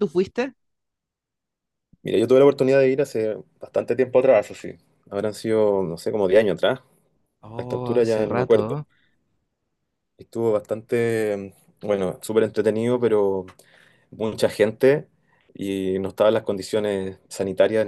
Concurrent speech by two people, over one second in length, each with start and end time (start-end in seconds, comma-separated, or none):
7.5-8.8